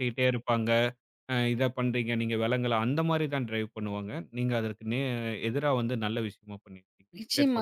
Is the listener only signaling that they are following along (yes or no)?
no